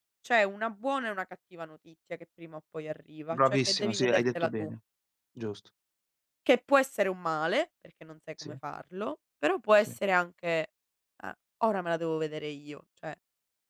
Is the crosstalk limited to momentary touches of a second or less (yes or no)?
no